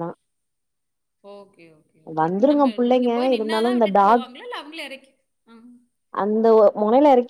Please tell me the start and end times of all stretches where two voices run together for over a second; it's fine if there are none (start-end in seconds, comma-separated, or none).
2.2-4.2